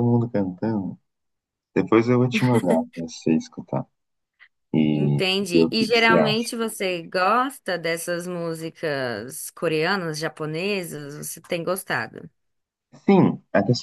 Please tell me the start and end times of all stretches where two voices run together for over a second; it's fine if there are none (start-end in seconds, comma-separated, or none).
4.9-6.5